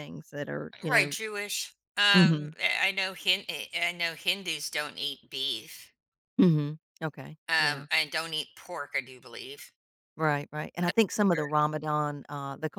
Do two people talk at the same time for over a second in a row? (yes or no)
no